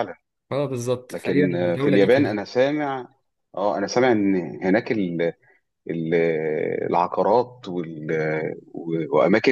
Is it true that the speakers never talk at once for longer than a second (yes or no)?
no